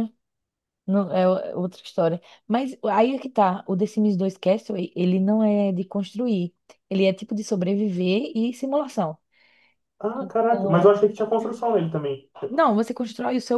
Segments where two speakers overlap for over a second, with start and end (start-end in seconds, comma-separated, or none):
none